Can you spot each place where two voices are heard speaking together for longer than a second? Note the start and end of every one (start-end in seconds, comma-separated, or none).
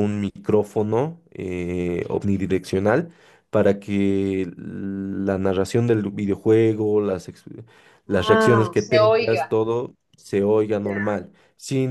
8.1-9.5